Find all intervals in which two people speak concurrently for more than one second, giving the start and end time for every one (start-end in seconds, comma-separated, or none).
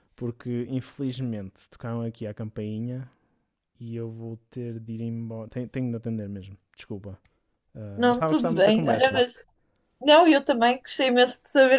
8.0-9.2